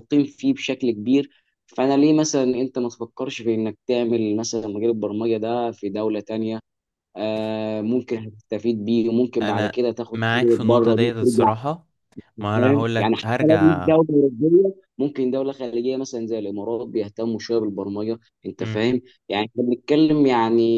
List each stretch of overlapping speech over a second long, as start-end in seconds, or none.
9.4-11.5, 12.5-13.9